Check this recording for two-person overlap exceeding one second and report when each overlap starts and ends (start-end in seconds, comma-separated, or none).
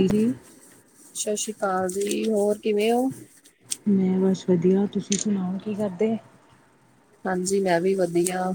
none